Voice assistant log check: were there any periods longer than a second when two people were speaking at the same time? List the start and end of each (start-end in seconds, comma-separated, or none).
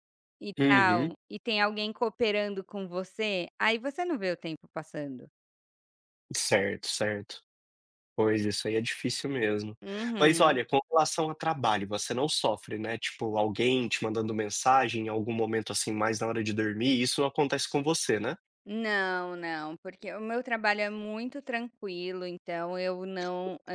none